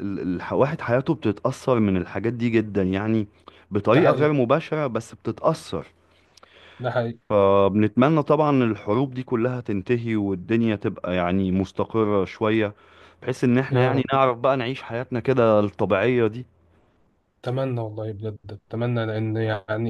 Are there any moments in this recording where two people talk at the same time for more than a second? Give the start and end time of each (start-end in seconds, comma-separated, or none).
none